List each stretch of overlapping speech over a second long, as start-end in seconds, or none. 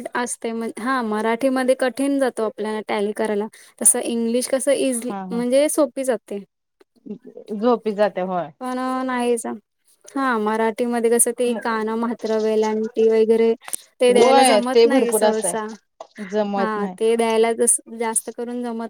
14.1-15.5